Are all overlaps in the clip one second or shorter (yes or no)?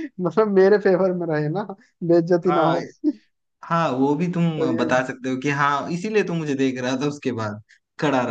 yes